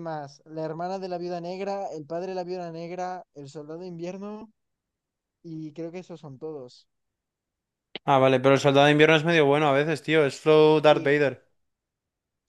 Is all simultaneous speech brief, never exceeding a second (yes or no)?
yes